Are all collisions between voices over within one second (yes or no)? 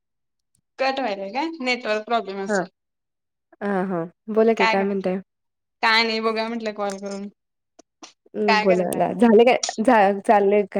yes